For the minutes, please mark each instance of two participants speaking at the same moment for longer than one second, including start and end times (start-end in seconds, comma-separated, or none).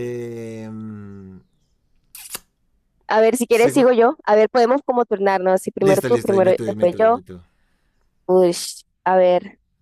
5.8-7.2